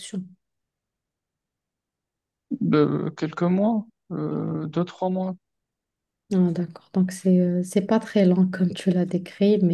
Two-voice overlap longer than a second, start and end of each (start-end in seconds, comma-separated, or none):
none